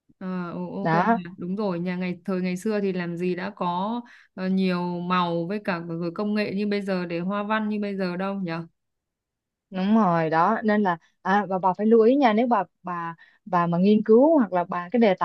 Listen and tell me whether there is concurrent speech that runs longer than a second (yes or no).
no